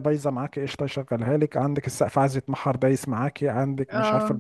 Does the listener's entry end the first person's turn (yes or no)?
yes